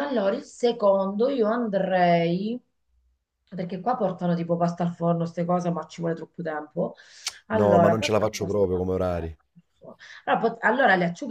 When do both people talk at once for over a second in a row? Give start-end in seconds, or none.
7.5-8.8